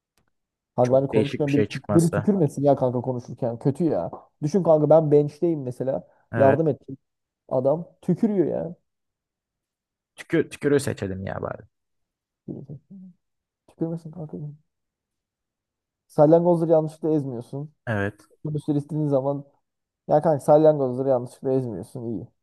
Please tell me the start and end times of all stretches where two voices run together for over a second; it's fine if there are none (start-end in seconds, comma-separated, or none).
0.8-2.3